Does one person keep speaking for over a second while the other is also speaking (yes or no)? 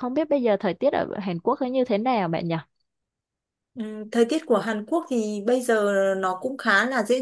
no